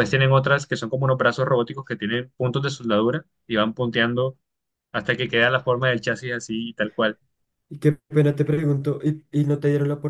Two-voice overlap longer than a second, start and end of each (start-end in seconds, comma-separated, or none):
none